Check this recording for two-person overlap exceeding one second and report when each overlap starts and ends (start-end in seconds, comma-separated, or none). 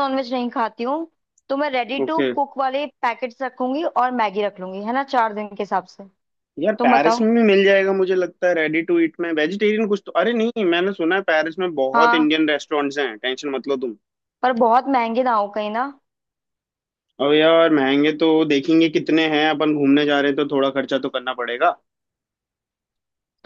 none